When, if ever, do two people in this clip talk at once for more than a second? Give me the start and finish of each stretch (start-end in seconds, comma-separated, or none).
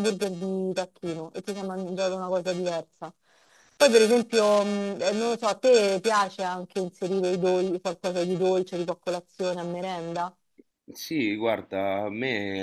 none